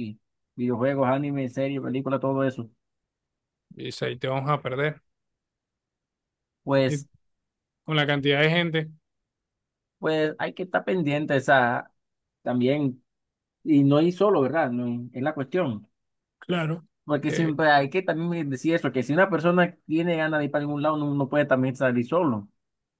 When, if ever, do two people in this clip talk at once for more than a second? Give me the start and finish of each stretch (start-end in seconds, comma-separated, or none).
none